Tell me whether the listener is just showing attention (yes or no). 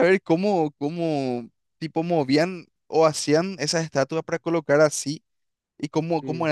yes